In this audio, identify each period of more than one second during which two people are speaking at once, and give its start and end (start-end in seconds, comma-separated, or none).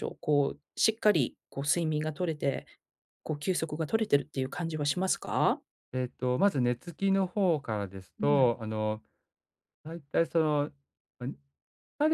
none